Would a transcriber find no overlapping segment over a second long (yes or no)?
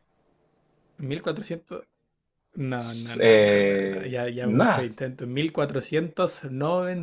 no